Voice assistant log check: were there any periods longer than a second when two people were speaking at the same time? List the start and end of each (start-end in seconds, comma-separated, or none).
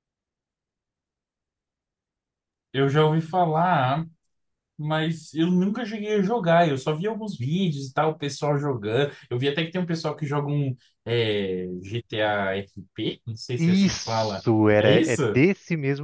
13.6-15.4